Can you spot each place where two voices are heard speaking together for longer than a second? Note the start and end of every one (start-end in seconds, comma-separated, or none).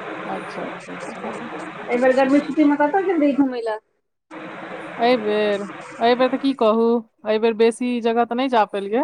none